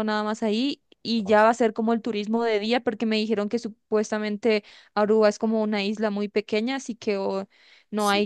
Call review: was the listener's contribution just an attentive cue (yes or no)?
yes